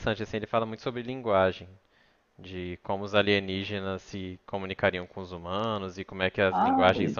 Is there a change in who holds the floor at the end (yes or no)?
no